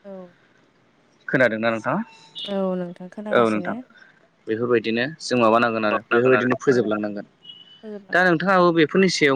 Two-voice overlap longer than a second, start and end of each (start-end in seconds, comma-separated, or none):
none